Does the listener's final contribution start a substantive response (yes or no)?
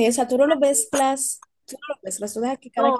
yes